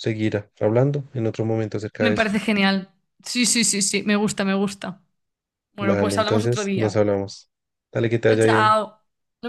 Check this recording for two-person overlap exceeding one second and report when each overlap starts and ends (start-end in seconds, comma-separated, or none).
5.8-7.0